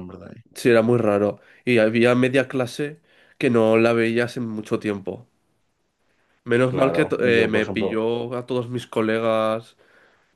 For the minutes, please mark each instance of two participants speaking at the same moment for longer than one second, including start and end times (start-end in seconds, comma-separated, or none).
6.6-8.0